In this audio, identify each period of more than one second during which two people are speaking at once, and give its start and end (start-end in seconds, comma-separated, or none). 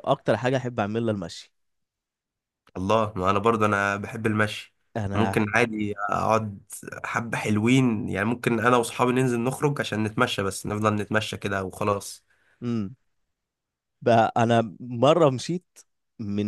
none